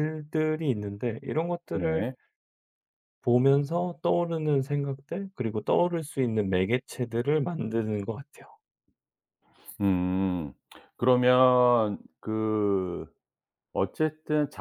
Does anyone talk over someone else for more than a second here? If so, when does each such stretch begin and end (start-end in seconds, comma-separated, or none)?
none